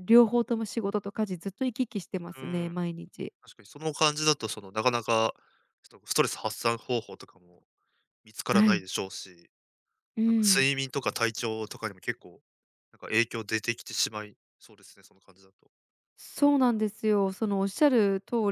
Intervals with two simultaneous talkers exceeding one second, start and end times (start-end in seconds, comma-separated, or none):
none